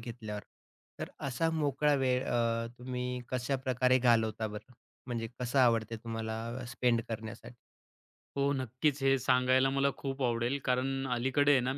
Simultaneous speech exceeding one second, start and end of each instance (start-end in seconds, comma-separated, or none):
none